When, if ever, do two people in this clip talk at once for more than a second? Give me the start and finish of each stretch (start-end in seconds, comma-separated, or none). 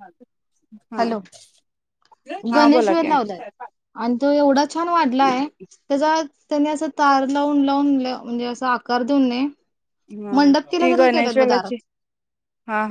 10.3-11.8